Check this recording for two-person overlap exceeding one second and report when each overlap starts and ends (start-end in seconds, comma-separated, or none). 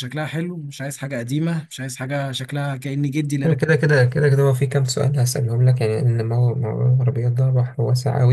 none